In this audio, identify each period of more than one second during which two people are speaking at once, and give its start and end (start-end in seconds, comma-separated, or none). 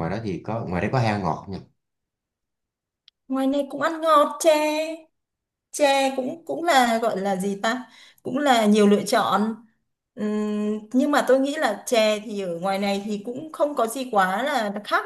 none